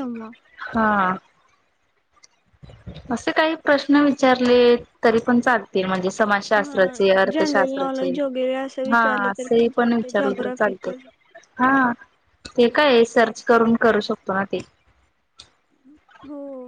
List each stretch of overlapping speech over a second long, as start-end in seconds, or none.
6.6-8.1, 8.9-10.9